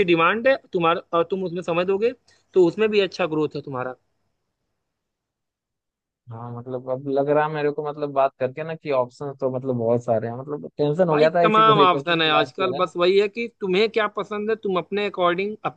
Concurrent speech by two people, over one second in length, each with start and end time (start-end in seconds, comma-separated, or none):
11.1-12.9